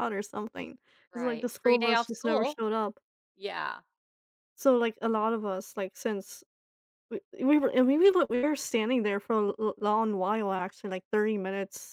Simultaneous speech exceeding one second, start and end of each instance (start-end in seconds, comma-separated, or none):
1.1-2.6